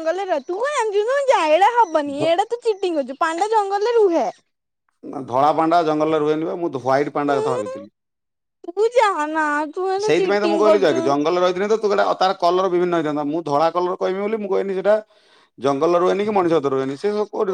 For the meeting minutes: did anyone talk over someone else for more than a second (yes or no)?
no